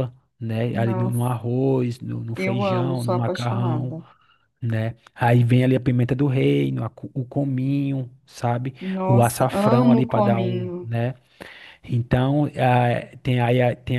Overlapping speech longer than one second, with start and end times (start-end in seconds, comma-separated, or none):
2.4-3.9, 8.8-10.9